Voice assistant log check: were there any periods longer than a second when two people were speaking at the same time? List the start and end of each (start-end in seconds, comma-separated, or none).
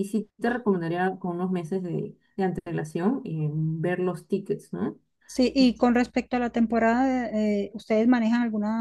none